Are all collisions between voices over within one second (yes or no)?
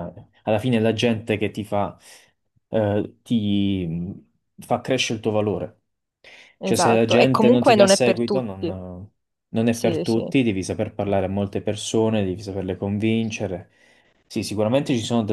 no